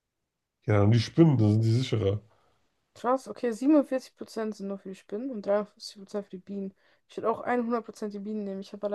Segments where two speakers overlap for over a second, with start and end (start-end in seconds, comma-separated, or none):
none